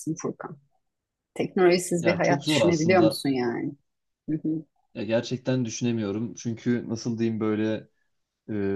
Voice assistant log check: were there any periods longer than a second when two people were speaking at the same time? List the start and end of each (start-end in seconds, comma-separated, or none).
2.0-3.2